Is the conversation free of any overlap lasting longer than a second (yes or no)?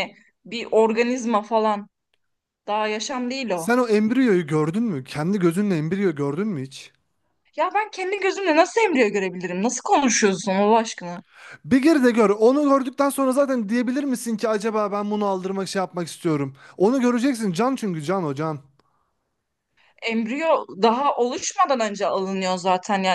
yes